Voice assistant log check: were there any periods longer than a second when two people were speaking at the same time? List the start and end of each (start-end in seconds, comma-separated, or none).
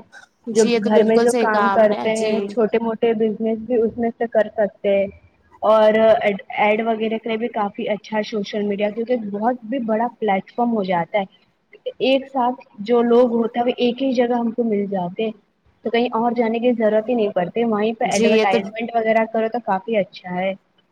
0.5-2.4